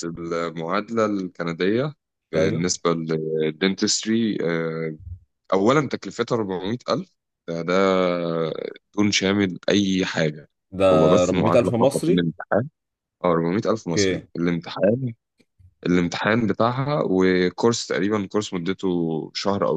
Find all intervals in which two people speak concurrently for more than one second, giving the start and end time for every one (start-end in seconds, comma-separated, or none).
10.9-12.3